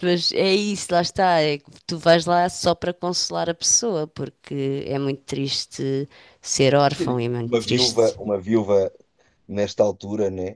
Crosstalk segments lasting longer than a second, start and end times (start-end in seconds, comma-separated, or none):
7.0-8.2